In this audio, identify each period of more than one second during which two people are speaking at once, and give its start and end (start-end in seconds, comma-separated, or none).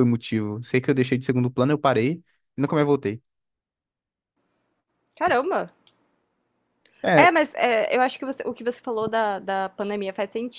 none